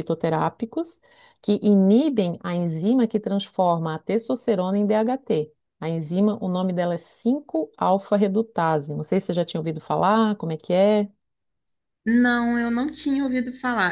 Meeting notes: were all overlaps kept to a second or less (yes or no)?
yes